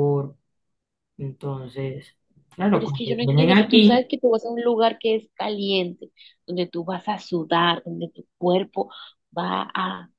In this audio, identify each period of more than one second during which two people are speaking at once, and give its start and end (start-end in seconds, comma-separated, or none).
2.7-4.1